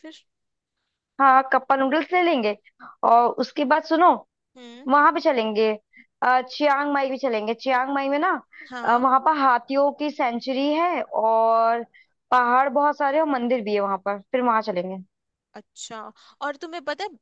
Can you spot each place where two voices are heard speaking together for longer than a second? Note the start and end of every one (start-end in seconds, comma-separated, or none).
none